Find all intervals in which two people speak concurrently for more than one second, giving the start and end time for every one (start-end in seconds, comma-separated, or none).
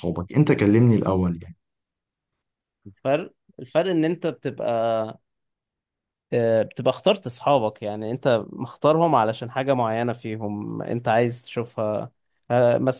none